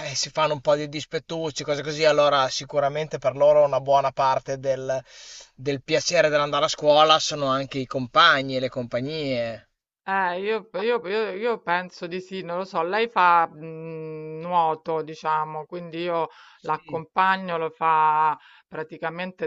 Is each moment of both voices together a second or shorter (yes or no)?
yes